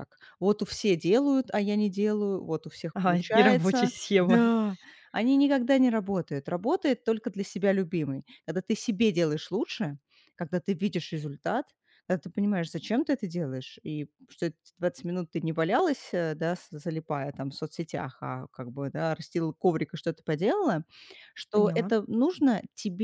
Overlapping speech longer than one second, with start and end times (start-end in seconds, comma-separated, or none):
3.0-4.4